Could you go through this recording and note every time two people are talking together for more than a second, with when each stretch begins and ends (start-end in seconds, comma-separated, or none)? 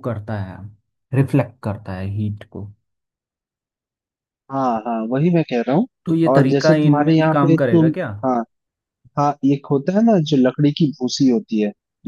6.3-8.1